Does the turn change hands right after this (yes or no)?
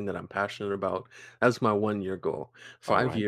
no